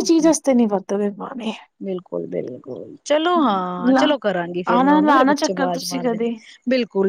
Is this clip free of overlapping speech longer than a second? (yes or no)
no